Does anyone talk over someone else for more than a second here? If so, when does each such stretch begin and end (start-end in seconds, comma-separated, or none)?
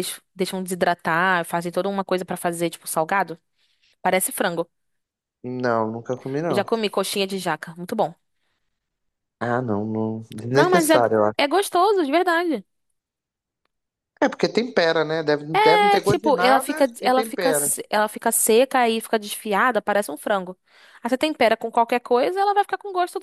16.0-17.7